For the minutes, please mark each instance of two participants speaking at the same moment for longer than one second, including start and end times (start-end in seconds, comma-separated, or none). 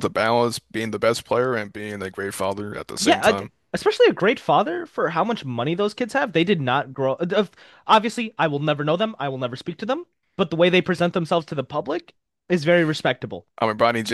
none